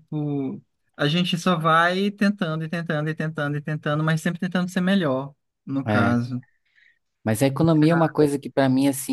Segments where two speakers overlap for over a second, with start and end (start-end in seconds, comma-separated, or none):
none